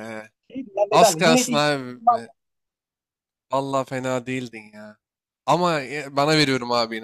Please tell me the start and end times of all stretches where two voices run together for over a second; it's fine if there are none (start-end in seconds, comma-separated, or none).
0.9-2.2